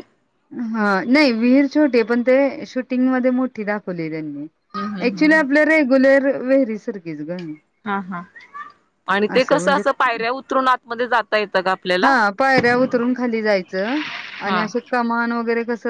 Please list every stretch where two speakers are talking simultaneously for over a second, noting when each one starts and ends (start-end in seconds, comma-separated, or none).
none